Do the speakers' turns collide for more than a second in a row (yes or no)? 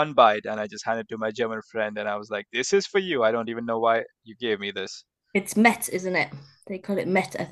no